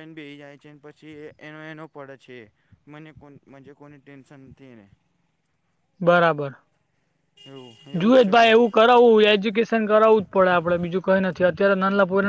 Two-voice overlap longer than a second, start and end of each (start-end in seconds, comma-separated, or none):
none